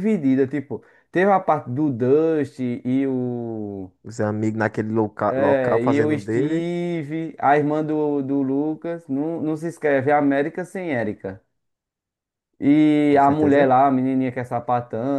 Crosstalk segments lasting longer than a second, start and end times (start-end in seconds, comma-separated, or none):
5.2-6.6